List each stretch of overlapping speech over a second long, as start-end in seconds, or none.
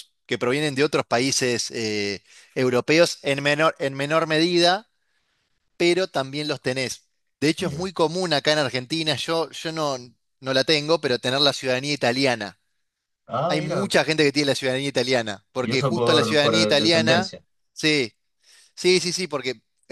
15.6-17.3